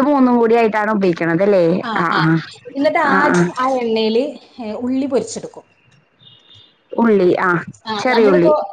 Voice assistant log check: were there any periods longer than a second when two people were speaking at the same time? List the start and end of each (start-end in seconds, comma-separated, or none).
none